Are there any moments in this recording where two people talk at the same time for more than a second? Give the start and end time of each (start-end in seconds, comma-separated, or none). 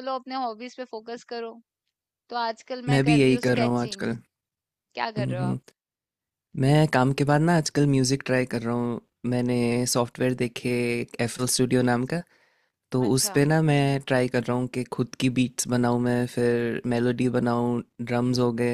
2.9-4.1